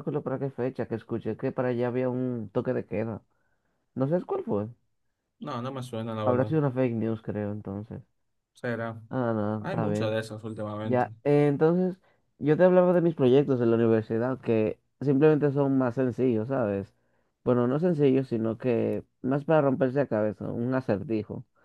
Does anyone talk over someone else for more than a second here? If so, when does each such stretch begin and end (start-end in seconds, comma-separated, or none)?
none